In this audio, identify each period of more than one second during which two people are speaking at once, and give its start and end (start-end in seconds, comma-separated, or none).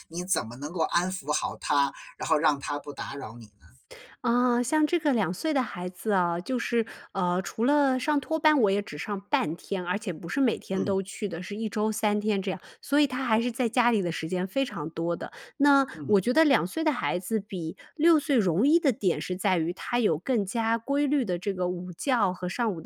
none